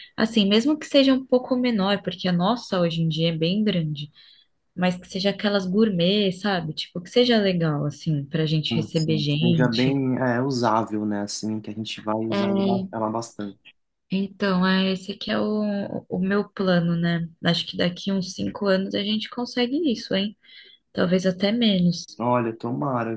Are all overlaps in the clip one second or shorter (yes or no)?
no